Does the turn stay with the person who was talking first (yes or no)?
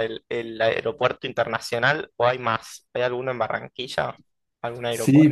no